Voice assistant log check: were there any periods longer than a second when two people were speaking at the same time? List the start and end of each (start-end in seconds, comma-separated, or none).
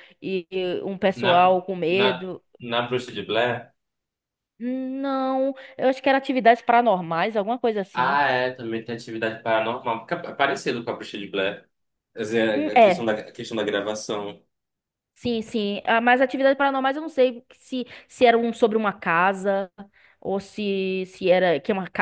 none